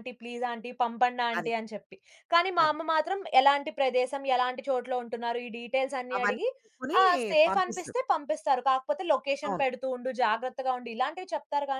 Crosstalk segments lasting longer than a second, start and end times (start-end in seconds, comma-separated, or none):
none